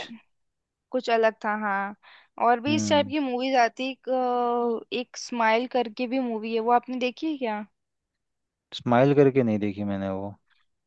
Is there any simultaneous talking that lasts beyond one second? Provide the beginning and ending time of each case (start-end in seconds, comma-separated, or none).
none